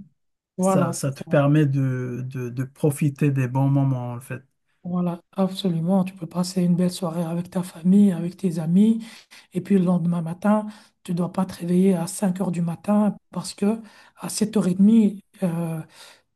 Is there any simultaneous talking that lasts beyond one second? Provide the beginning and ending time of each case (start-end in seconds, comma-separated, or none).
none